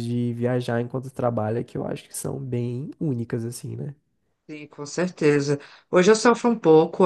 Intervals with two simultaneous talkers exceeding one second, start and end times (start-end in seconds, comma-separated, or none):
none